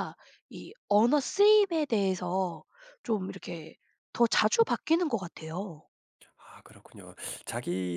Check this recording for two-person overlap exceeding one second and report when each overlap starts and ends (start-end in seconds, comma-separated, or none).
none